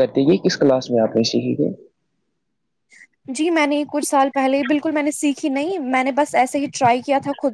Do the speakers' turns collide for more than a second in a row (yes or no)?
no